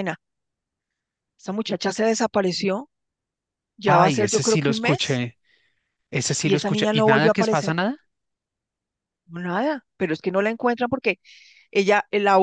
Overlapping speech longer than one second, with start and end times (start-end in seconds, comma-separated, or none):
3.9-5.2, 6.4-7.8